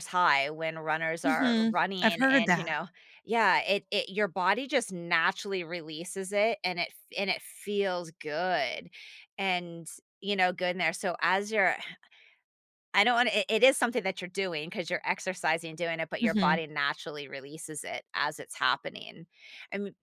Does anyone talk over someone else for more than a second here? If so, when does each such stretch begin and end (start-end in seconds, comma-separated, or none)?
1.3-2.8